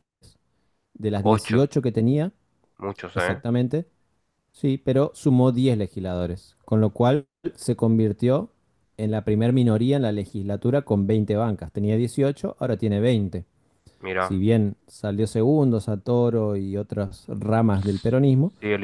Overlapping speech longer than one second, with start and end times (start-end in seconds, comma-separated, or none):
none